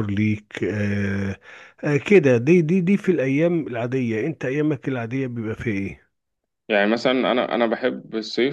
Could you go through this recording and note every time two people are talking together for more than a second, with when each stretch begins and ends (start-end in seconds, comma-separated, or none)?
none